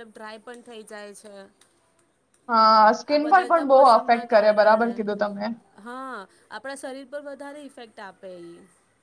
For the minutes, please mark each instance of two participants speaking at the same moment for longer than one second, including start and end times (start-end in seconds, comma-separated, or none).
3.1-4.9